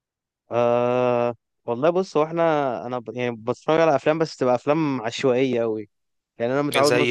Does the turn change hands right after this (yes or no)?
no